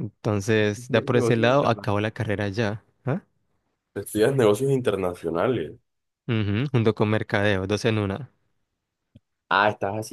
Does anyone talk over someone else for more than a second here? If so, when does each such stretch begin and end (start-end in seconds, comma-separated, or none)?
0.6-1.9